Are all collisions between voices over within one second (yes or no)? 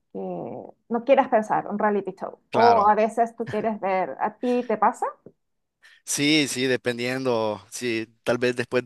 yes